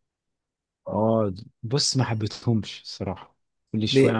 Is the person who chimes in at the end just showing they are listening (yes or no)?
yes